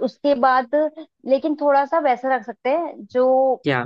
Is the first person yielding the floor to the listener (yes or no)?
no